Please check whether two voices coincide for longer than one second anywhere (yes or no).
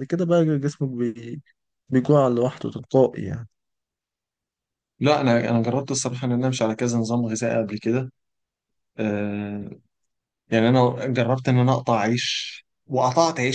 no